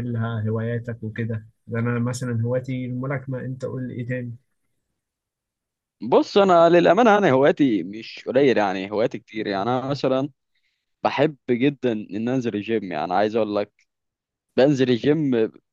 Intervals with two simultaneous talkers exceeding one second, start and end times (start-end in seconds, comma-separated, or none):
none